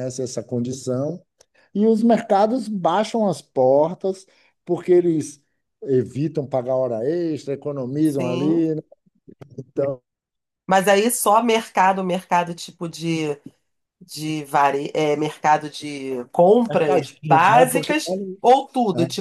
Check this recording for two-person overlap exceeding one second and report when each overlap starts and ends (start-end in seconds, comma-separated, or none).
16.7-18.4